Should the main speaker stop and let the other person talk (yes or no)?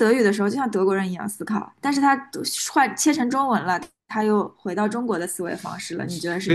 yes